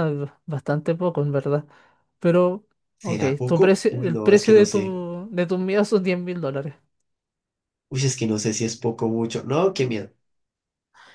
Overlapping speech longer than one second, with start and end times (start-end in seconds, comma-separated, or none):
3.0-5.0